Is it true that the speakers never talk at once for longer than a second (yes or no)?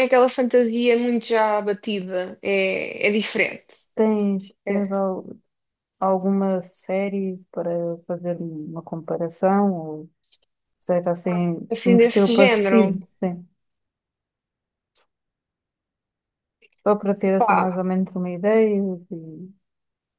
no